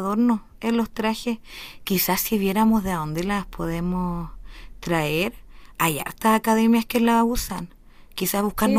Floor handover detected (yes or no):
yes